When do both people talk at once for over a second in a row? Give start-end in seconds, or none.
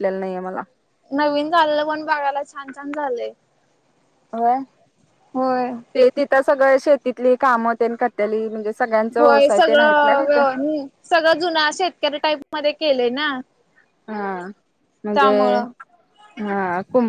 9.2-10.4